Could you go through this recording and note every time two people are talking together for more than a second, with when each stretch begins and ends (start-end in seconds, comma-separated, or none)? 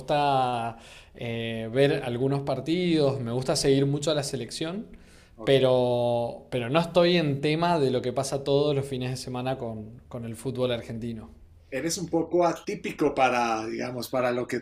none